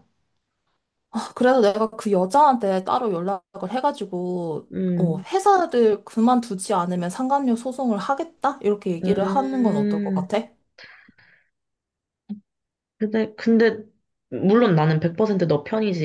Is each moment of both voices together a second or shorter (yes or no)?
no